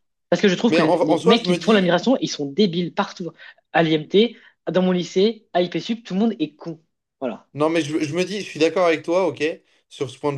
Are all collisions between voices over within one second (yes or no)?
no